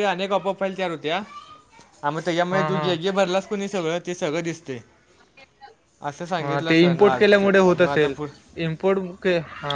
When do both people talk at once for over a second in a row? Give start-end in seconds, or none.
6.4-8.1